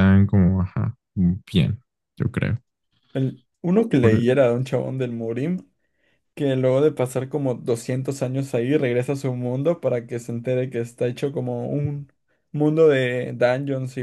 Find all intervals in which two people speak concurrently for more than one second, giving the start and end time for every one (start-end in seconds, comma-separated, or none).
none